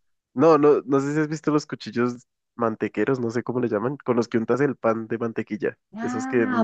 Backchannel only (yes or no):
no